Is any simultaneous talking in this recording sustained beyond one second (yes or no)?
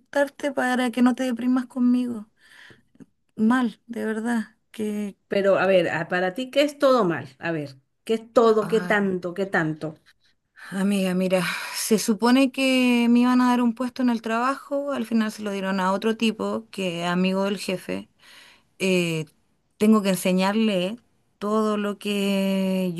no